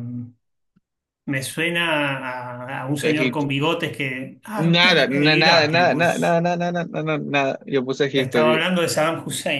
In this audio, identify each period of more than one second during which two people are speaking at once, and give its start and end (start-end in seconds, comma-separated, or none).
4.6-6.4